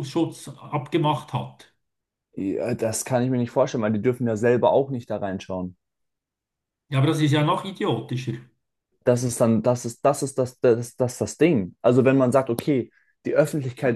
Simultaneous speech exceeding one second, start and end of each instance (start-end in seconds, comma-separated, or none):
none